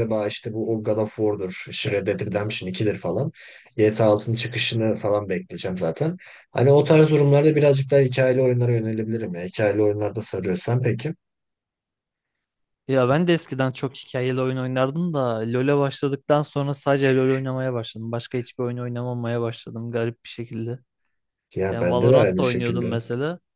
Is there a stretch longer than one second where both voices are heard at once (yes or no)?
yes